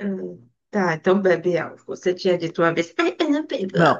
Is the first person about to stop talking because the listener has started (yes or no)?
yes